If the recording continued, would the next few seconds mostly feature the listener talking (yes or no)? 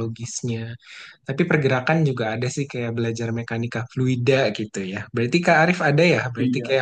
no